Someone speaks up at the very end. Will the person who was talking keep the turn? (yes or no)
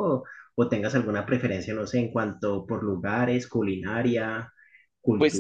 no